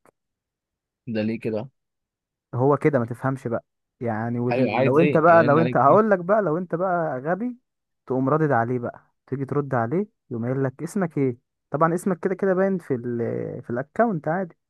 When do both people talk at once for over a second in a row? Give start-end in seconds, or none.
4.5-6.0